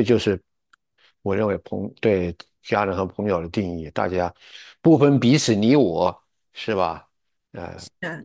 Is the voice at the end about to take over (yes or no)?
yes